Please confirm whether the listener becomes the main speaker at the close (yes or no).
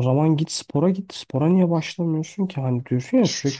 no